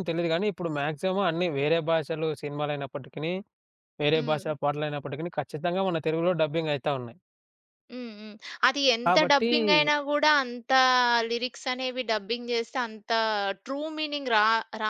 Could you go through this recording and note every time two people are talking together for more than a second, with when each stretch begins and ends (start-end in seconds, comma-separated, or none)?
none